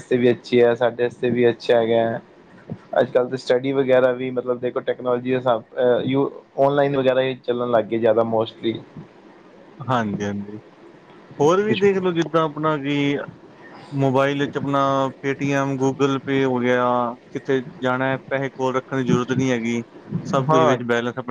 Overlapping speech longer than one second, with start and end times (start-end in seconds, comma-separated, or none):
none